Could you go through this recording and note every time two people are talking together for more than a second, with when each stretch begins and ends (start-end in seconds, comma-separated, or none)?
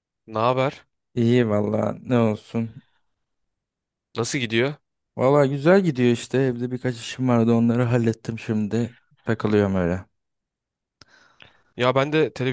none